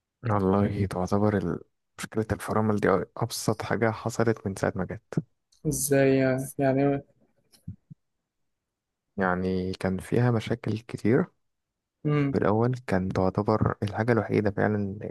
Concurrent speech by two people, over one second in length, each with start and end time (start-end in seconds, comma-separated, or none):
none